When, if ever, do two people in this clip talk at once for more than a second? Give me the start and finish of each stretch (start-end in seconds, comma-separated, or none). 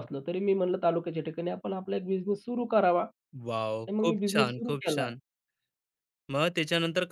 3.5-5.1